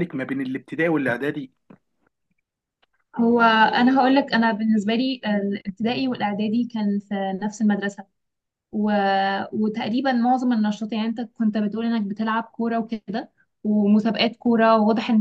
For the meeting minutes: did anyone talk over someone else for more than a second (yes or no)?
no